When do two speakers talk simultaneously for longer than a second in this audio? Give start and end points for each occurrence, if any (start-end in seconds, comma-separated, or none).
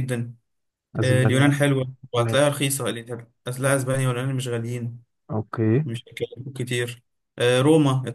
none